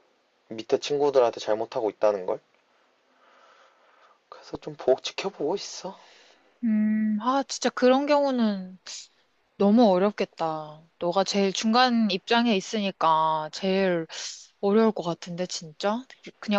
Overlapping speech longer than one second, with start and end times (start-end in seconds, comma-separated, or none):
none